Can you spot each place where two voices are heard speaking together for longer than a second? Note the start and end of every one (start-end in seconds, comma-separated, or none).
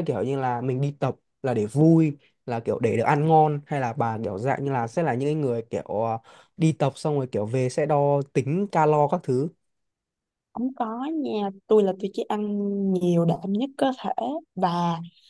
none